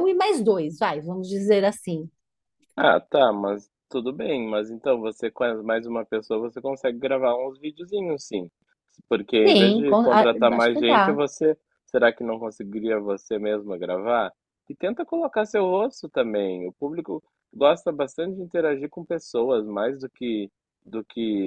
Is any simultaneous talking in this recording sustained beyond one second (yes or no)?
yes